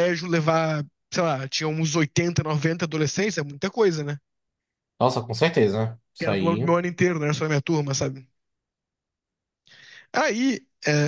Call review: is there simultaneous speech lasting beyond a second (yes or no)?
no